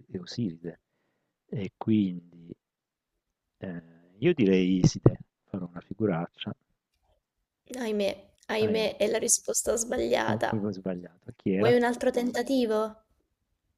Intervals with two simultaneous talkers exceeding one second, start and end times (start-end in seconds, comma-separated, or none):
none